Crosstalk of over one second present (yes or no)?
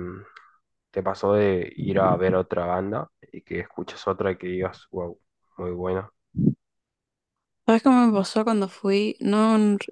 no